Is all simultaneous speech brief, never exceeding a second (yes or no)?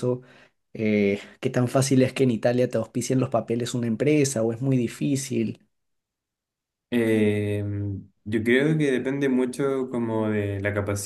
yes